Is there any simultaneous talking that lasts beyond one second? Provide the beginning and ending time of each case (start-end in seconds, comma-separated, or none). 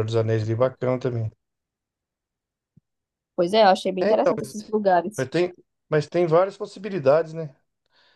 none